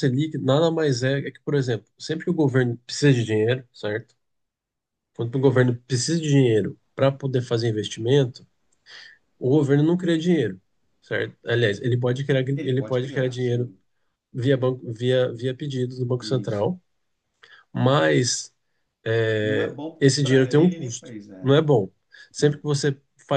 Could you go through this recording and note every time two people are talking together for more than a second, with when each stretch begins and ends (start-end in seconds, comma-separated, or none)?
12.5-13.7, 19.4-21.5